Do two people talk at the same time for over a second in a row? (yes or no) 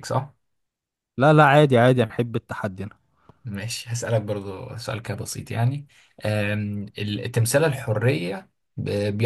no